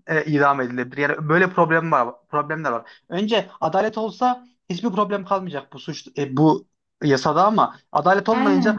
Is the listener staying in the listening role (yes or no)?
yes